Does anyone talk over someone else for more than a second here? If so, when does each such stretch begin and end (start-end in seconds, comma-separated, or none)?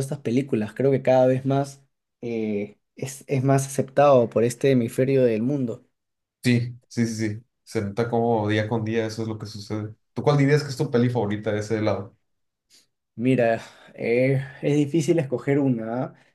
none